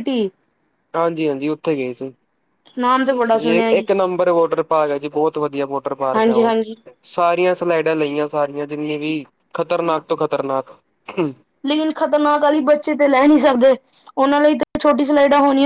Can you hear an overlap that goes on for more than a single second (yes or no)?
no